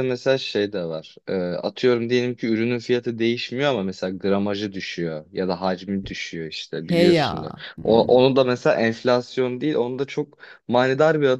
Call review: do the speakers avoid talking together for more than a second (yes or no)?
no